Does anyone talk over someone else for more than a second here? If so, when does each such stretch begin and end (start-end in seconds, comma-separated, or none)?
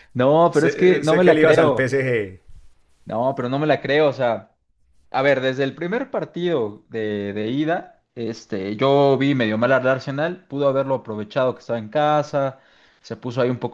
0.5-1.9